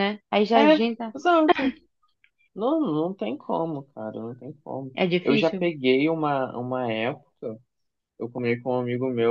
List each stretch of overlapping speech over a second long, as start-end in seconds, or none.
none